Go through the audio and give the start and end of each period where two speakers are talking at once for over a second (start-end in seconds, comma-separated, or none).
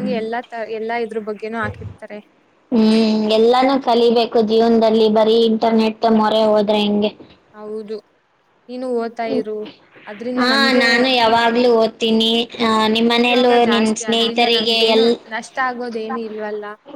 13.2-15.0